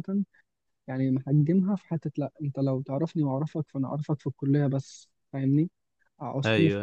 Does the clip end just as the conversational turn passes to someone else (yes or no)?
no